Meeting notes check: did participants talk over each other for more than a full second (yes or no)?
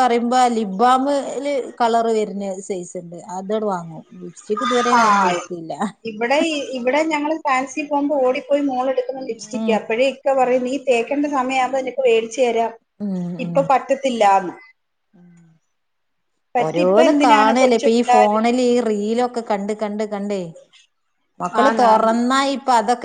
yes